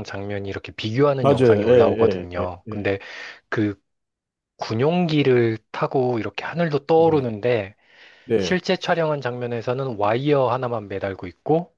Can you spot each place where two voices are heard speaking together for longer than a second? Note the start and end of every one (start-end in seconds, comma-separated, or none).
1.2-2.8